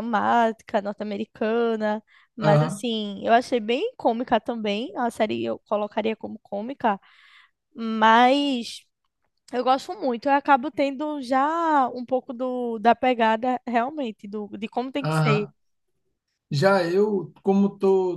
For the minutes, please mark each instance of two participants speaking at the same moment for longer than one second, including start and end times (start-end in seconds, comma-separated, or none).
none